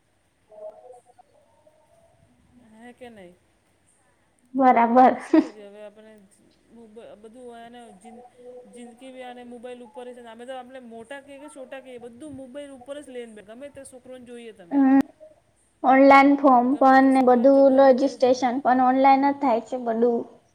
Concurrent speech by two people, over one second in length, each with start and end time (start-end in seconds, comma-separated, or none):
16.7-18.4